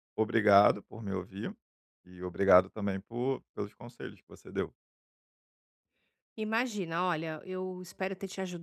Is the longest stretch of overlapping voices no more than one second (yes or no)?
yes